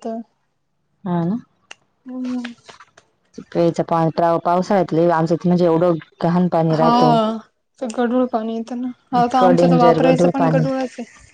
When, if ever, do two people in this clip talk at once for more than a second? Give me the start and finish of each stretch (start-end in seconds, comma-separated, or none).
9.2-10.7